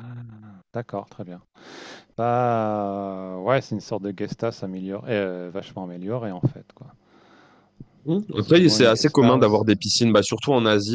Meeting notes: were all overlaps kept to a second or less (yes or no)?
no